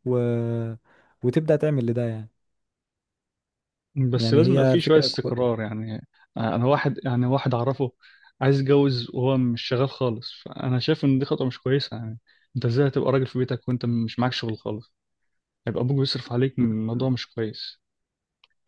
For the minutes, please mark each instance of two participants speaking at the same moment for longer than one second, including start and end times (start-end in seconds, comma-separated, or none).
4.1-5.4